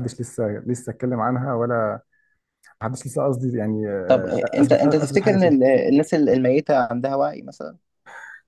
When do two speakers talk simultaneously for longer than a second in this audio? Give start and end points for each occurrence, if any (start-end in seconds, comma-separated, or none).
4.1-5.6